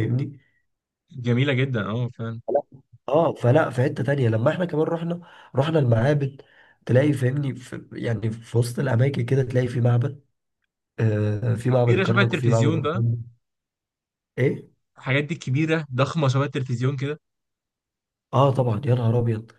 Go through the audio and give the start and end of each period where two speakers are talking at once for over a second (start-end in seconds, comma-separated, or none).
11.8-13.0